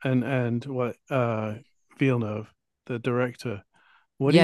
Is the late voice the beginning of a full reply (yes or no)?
no